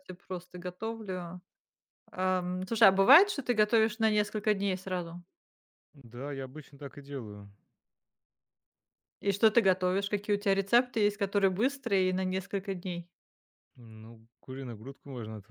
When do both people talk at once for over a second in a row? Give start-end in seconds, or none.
none